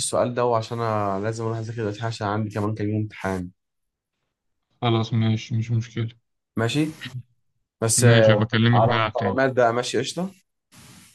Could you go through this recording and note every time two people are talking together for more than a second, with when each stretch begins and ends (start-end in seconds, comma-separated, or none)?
8.0-9.4